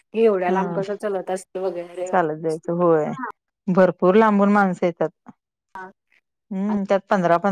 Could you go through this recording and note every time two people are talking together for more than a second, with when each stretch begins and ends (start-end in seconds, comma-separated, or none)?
none